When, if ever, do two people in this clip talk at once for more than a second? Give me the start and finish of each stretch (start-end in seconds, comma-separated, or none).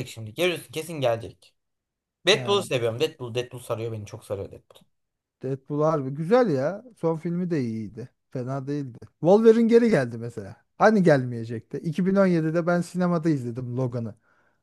none